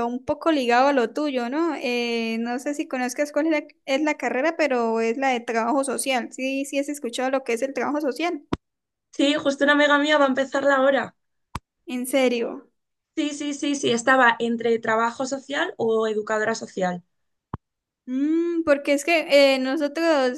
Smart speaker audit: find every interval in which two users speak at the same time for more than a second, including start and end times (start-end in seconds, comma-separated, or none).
none